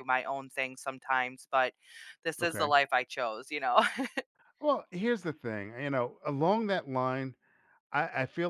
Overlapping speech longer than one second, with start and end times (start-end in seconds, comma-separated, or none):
none